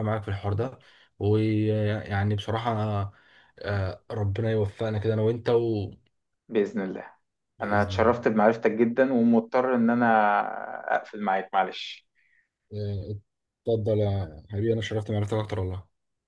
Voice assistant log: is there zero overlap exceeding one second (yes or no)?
yes